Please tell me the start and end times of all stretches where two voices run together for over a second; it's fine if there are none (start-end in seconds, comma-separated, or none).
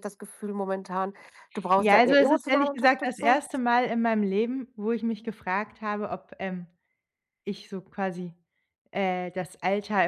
1.8-3.4